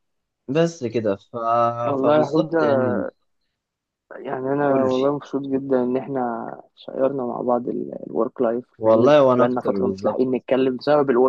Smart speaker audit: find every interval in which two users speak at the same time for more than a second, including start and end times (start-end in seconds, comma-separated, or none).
8.8-10.2